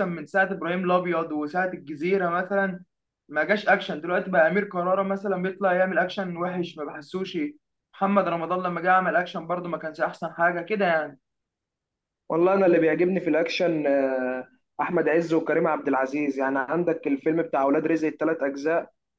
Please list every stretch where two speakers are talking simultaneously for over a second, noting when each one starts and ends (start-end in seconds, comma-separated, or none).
none